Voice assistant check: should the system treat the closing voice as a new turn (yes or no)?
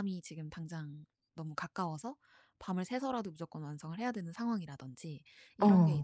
no